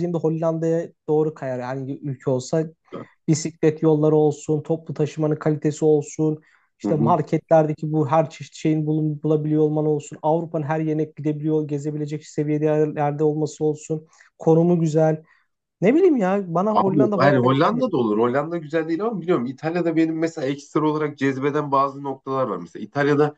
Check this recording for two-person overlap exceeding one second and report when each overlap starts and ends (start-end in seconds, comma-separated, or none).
16.7-18.0